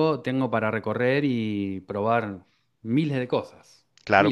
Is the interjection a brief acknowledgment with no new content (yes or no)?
no